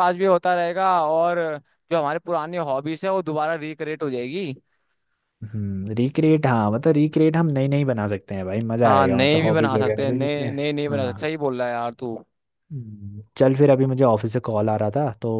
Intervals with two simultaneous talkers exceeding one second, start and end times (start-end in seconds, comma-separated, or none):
8.8-11.3